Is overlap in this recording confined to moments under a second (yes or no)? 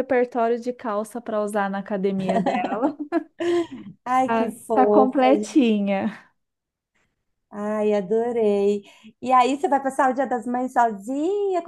no